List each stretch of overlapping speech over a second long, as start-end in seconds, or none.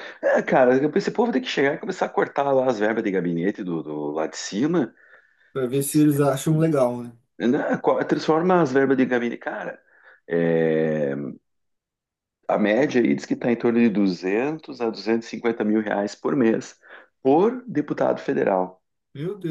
none